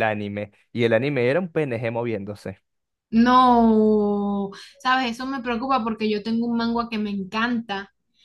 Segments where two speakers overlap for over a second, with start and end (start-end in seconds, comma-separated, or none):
none